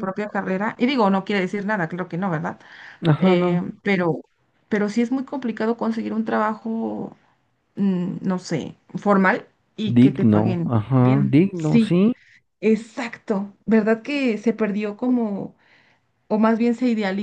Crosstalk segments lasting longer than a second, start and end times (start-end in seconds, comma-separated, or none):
9.9-11.9